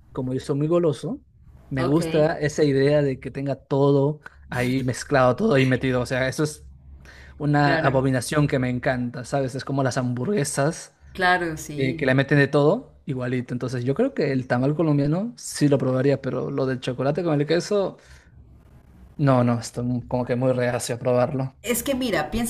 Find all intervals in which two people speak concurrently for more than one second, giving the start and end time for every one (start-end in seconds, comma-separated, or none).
none